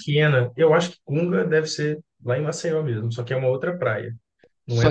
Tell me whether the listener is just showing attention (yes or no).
no